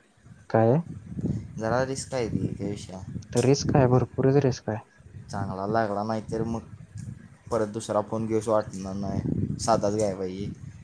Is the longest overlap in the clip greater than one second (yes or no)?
no